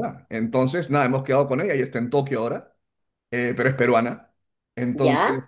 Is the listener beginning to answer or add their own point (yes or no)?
no